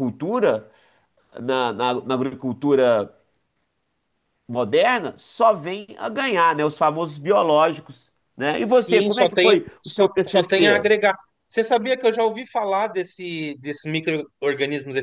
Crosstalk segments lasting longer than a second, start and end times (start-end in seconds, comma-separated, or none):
8.6-10.9